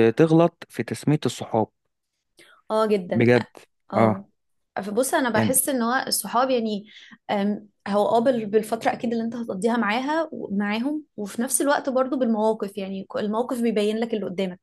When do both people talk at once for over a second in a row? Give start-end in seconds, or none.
none